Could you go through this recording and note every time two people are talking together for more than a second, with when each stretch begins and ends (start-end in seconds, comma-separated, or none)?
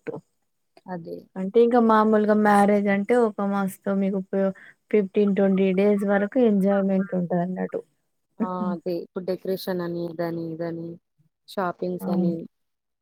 none